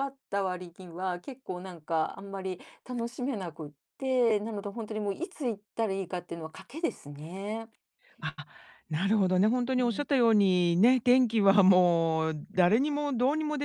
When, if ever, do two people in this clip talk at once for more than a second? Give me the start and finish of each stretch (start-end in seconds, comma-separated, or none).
none